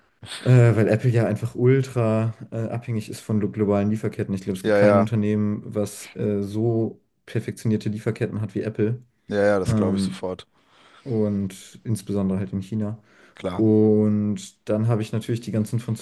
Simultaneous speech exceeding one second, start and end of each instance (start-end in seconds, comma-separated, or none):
none